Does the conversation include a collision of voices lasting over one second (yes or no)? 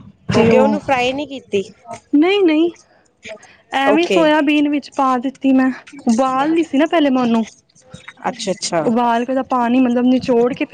no